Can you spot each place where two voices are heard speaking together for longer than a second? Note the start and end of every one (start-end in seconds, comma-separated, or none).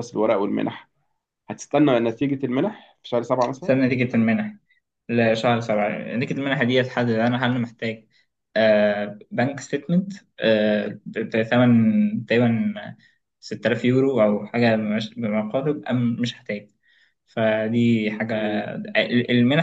none